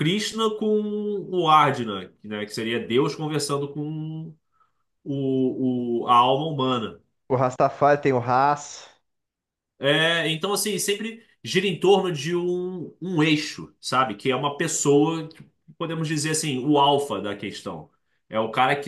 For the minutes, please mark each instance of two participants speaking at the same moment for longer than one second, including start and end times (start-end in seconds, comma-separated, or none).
none